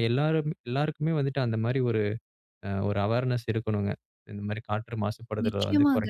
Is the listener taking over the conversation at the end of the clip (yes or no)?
yes